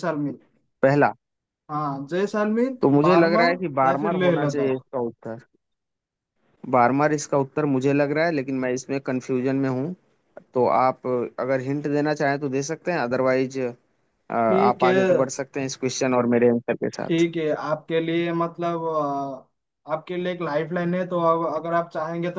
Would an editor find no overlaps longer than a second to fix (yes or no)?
no